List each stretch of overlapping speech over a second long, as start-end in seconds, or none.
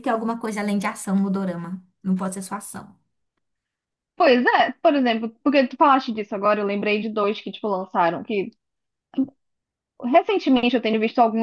none